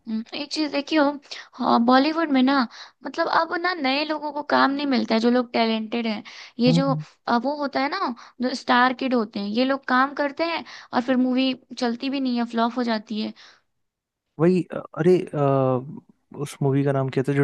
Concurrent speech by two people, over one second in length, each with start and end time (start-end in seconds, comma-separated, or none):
none